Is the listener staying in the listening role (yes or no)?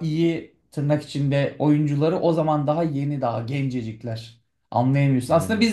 yes